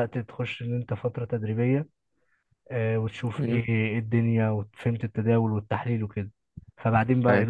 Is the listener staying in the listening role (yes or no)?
yes